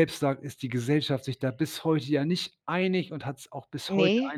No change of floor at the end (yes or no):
yes